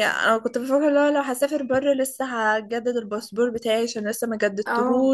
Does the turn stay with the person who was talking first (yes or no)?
yes